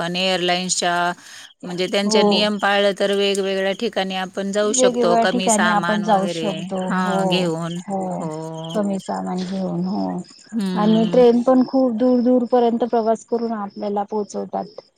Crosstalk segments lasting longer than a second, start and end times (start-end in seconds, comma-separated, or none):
none